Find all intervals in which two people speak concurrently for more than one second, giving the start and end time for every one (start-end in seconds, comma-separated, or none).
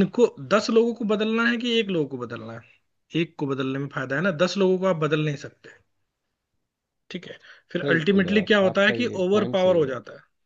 7.8-10.0